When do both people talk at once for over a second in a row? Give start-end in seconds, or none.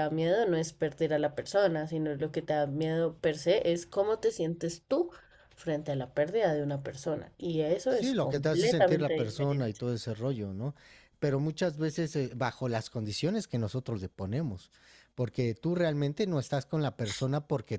7.9-9.8